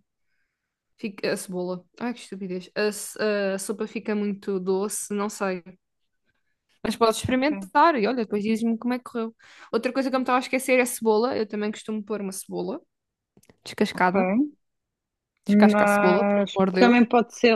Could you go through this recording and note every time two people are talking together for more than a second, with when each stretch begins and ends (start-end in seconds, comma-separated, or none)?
15.5-17.0